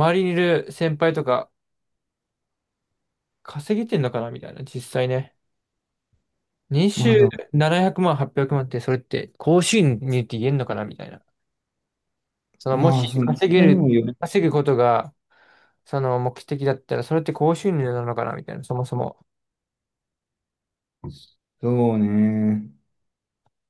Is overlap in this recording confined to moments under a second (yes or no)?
no